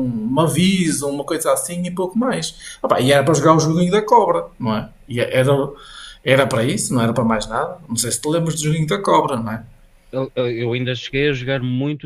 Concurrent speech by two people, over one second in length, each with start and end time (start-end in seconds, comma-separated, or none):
none